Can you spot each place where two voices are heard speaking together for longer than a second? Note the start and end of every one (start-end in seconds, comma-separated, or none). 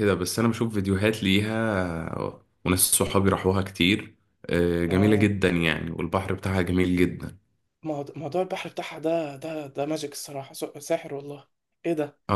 none